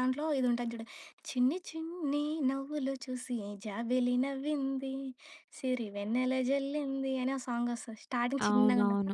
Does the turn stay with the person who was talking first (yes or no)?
no